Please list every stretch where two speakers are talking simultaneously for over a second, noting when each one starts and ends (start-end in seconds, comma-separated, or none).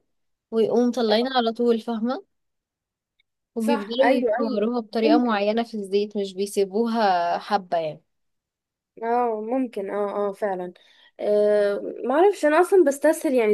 3.6-5.4